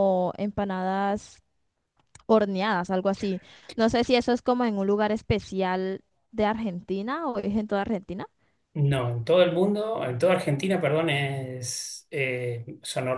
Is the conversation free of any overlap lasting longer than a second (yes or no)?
yes